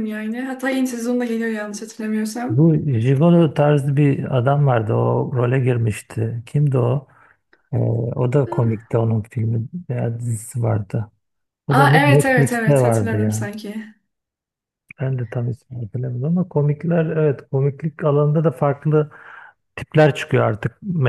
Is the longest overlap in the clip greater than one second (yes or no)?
yes